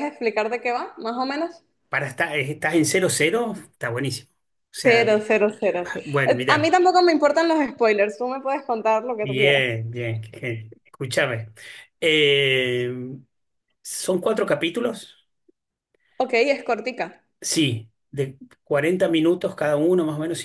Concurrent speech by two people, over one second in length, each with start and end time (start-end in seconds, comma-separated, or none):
none